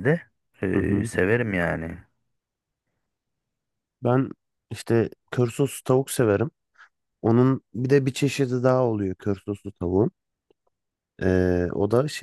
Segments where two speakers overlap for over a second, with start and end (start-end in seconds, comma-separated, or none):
none